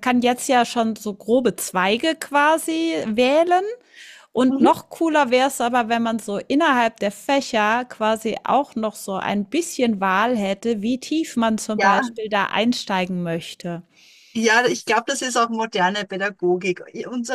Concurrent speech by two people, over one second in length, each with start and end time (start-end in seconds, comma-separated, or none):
none